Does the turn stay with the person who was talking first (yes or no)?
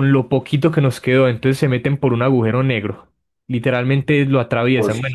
yes